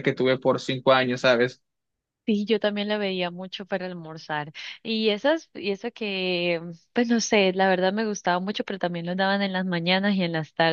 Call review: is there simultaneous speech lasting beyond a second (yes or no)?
no